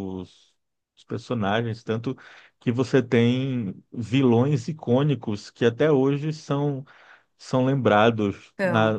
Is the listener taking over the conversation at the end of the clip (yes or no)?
no